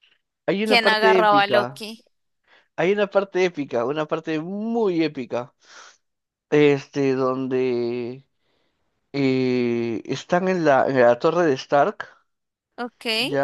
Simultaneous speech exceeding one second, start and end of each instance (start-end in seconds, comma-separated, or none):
0.6-1.9